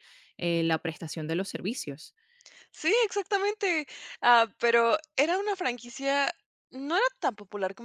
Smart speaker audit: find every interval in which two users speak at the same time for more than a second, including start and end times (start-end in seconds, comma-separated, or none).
none